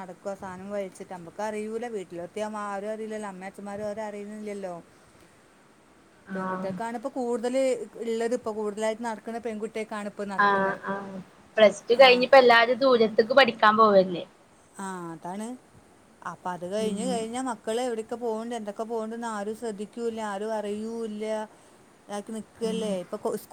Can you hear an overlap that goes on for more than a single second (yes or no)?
no